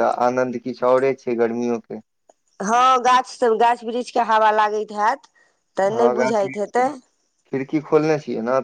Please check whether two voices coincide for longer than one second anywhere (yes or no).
no